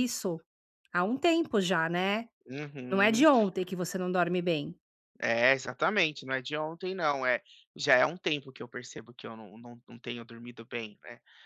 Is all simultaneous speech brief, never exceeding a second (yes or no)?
yes